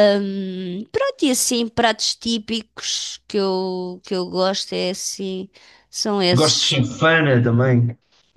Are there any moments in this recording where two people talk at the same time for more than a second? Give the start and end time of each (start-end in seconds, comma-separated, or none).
none